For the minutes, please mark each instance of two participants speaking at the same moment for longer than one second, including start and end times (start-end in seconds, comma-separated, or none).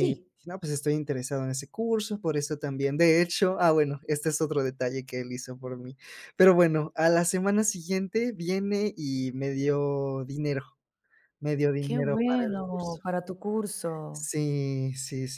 11.8-13.0